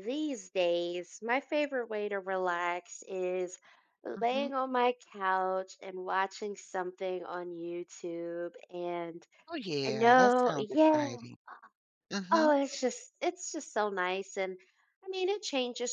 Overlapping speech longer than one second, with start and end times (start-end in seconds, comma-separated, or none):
9.9-11.2